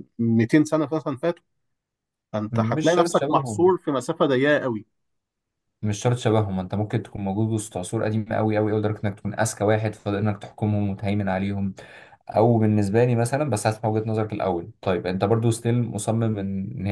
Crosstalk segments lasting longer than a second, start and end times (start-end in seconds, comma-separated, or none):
2.5-3.8